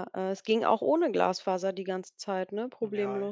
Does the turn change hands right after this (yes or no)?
yes